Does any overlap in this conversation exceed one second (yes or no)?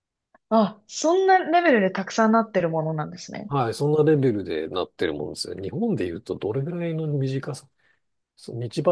no